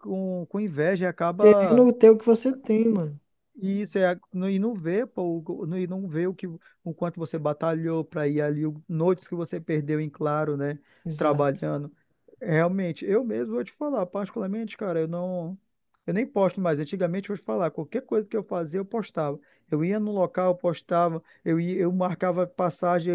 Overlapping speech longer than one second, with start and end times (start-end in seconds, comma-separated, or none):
none